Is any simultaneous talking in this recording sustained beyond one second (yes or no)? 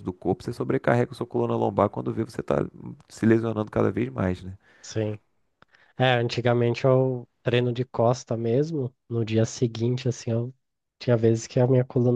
no